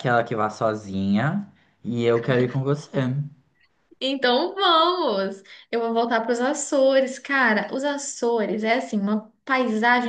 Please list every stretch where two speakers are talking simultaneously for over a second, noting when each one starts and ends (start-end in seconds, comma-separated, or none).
none